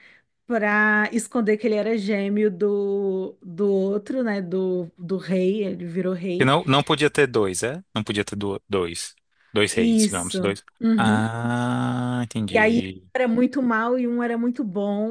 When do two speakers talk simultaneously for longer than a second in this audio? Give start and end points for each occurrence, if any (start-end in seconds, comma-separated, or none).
9.8-11.2